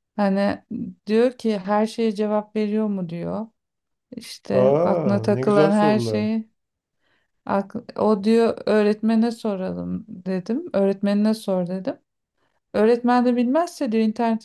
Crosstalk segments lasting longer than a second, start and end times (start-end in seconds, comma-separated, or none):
4.5-6.4